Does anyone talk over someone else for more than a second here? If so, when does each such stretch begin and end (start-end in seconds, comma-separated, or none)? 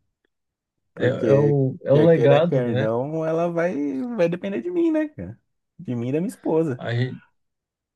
1.0-2.9